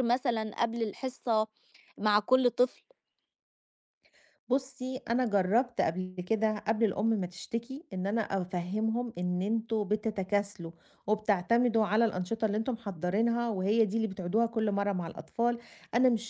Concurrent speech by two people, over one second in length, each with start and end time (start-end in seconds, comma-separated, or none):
none